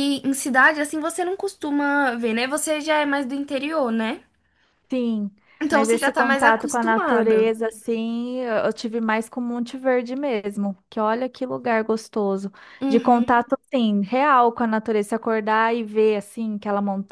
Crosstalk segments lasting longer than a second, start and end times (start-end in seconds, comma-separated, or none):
5.7-7.5